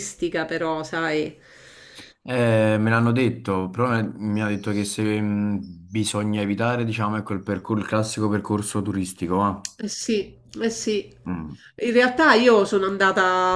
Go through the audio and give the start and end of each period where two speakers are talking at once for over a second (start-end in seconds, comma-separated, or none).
none